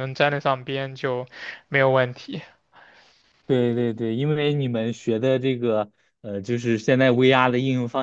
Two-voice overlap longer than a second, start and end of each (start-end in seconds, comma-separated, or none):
none